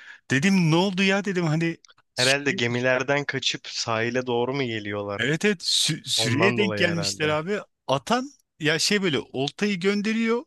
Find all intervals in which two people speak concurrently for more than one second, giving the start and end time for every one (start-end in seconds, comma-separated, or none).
6.2-7.4